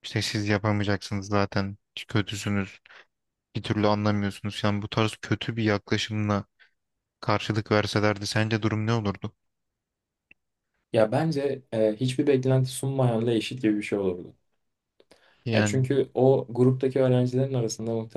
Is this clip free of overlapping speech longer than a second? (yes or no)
yes